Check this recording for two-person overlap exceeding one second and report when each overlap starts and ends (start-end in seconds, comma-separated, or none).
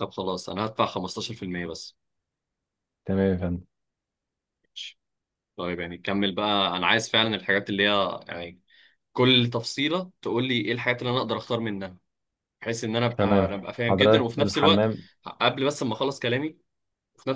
13.2-14.9